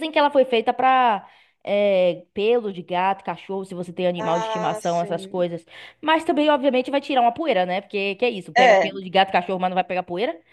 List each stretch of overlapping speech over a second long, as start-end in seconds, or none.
4.2-5.5